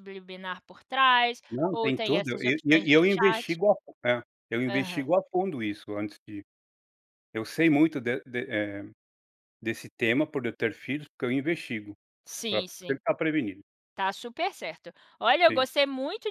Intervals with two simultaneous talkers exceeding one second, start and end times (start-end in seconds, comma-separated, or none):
1.5-3.5